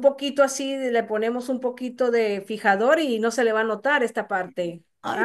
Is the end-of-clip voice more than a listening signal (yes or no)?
yes